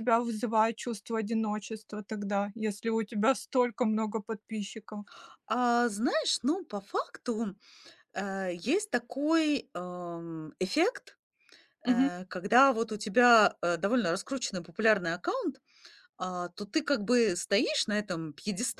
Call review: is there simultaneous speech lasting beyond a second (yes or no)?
no